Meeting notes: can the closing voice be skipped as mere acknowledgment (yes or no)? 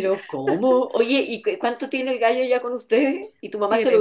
no